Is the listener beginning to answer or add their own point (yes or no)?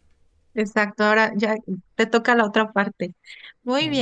no